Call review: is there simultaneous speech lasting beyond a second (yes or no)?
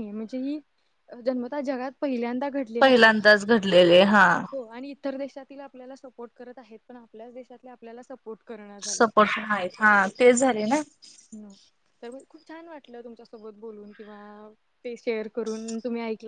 no